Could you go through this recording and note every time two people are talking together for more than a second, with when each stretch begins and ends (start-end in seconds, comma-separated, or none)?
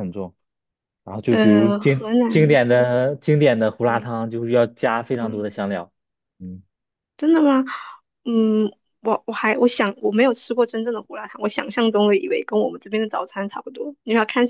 1.3-2.6